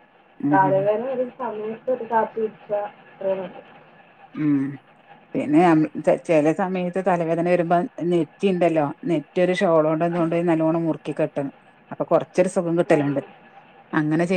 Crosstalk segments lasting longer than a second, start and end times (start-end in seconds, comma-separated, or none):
none